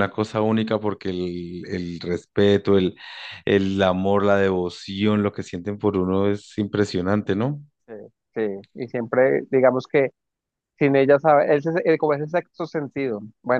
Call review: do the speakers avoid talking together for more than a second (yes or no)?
yes